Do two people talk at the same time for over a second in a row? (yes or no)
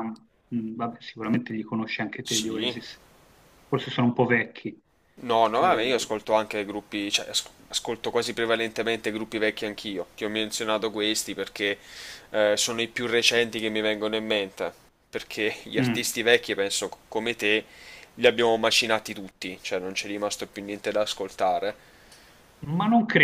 no